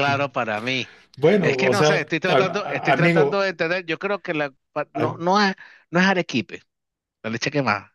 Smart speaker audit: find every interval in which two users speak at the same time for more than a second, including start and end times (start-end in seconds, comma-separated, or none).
1.4-3.5